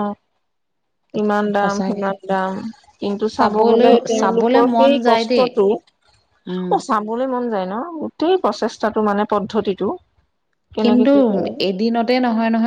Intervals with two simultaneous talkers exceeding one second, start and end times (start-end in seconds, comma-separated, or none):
3.4-5.5